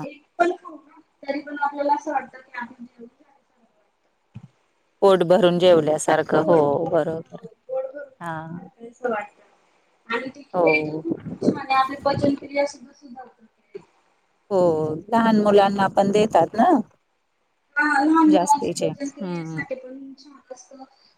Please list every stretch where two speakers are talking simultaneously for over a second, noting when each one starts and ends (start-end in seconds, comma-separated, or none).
18.3-19.6